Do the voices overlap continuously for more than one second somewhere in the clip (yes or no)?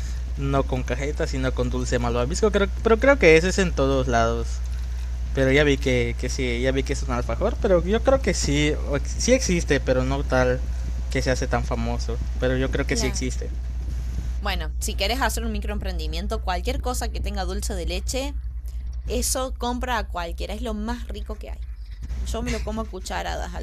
no